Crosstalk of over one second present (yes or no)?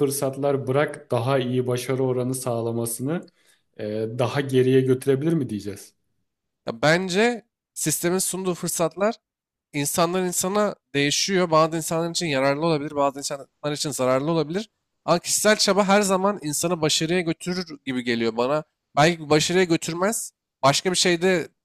no